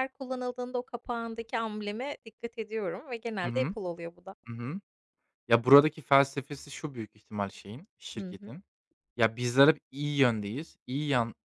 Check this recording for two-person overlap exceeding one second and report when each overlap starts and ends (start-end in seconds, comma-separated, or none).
none